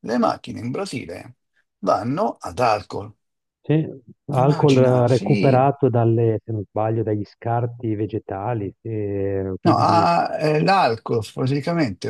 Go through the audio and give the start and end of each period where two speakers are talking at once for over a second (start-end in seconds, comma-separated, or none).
4.4-5.7